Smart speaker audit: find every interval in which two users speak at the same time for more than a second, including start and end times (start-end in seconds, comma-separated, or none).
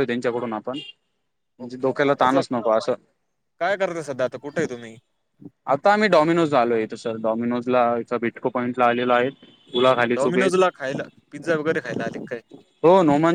none